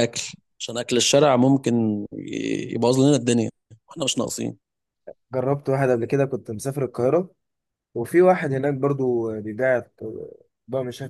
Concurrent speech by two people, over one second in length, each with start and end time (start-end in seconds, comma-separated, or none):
none